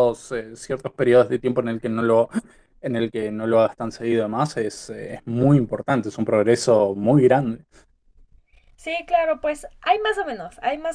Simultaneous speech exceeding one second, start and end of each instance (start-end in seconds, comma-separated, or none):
none